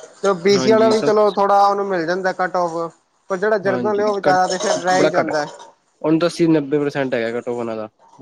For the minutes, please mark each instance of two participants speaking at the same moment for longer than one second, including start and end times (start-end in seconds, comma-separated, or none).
none